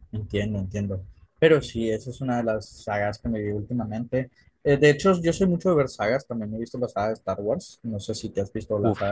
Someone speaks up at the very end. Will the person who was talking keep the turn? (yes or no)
no